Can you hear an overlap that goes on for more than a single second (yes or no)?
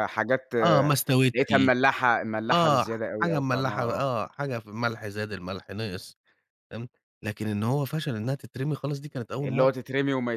yes